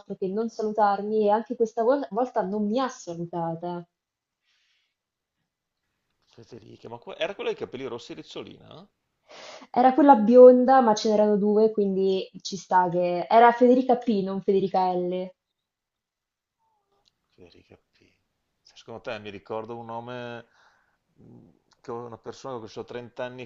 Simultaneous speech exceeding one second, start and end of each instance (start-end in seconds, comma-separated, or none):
none